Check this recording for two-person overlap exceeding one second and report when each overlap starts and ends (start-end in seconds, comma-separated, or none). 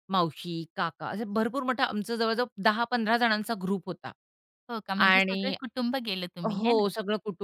none